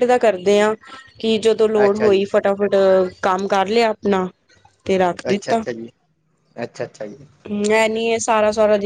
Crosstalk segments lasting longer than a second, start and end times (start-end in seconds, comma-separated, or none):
none